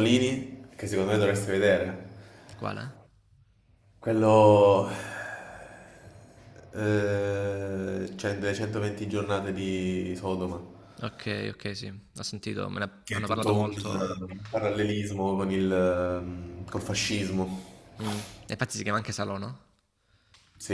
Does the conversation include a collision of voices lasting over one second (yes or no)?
yes